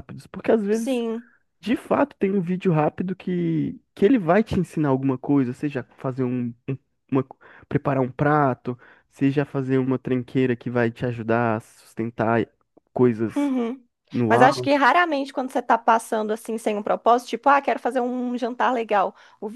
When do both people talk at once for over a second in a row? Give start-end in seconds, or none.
none